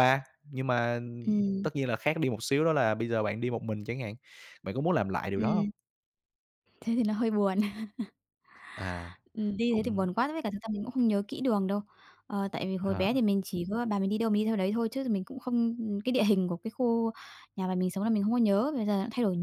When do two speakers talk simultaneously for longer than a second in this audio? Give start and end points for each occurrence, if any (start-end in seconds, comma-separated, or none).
none